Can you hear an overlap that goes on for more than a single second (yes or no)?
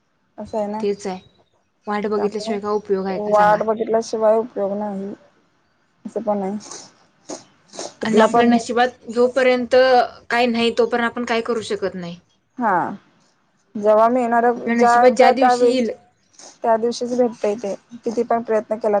yes